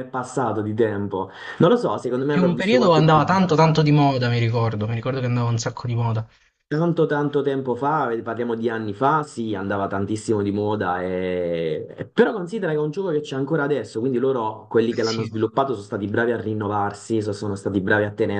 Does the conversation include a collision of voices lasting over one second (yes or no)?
yes